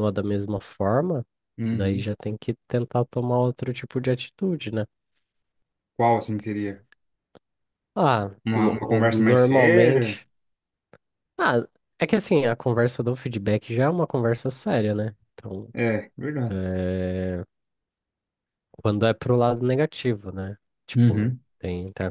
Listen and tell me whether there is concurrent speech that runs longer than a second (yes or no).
yes